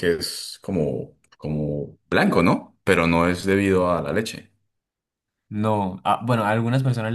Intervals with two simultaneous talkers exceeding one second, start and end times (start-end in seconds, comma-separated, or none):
none